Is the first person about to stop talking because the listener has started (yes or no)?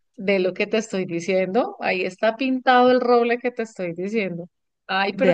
no